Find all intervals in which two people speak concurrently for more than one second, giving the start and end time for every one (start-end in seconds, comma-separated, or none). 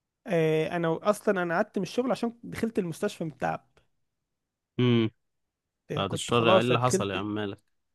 5.9-7.3